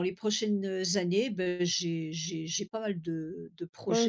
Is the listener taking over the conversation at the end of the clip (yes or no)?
yes